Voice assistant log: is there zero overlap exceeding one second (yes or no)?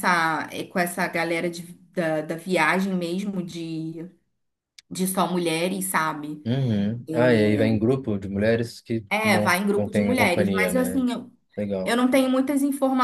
no